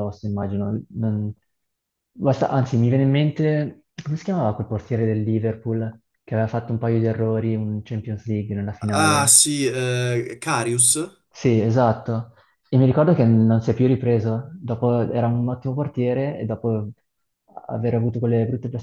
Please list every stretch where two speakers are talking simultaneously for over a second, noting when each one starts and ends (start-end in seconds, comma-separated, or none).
none